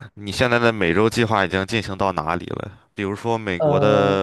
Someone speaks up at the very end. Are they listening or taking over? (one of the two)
listening